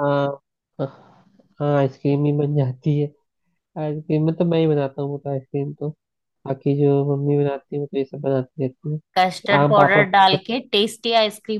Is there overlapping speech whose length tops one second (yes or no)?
yes